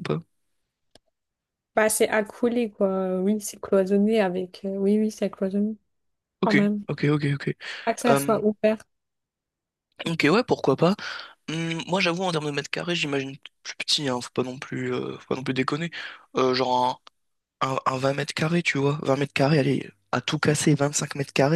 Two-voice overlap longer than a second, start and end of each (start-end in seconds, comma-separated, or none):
none